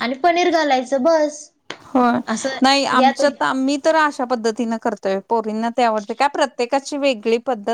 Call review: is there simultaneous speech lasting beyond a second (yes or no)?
no